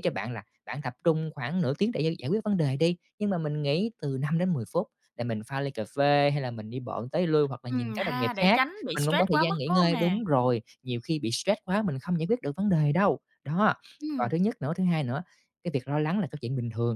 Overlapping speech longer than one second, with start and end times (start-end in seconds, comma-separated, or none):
7.7-10.2